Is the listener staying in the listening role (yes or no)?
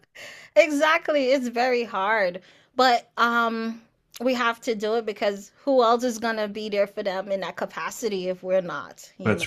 no